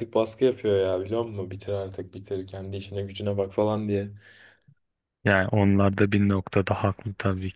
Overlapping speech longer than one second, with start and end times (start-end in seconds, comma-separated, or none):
none